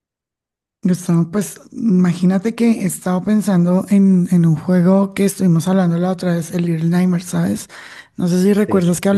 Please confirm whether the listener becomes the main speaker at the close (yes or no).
no